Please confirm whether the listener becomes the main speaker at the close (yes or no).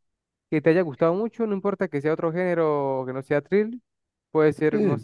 no